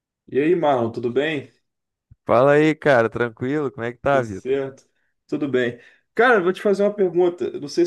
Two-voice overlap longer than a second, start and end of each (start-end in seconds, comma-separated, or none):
none